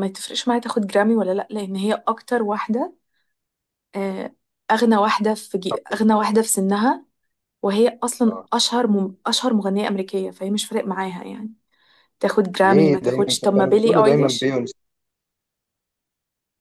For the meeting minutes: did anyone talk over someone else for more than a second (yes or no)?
yes